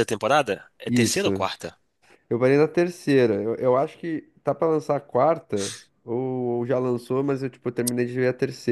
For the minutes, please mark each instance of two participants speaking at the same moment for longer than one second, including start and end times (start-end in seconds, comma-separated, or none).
none